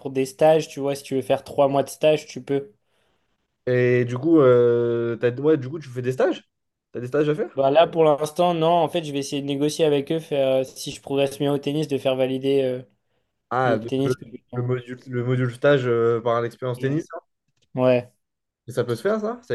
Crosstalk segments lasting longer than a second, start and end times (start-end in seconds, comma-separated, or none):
none